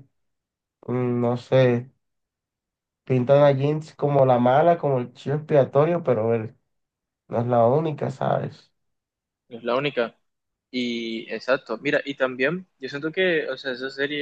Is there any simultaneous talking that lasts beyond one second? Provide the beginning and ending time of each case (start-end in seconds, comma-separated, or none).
none